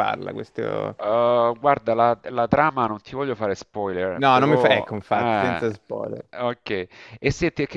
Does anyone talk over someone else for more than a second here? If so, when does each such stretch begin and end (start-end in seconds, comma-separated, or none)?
4.2-5.7